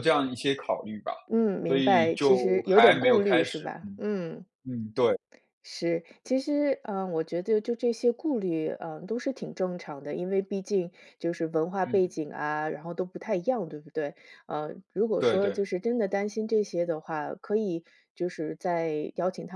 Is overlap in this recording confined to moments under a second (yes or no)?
no